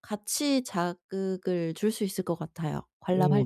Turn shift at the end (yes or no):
yes